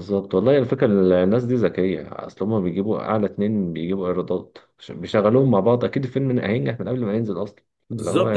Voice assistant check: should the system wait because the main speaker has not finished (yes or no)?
no